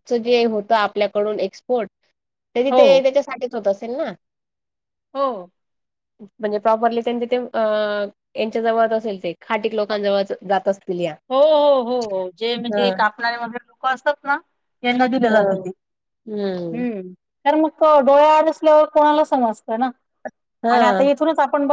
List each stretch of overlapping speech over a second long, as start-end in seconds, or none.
none